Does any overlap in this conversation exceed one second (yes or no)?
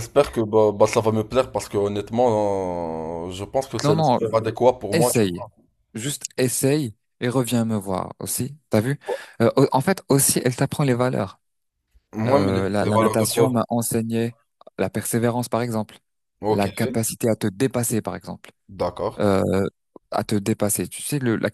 yes